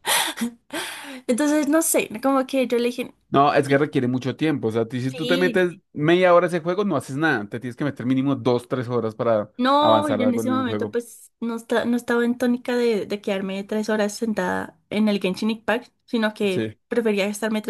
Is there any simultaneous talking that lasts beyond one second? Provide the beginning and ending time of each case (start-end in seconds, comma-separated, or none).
9.6-11.0